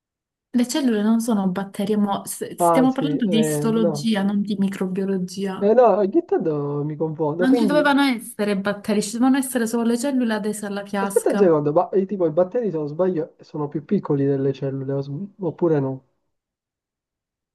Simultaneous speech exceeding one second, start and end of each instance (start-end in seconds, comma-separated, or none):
2.6-4.1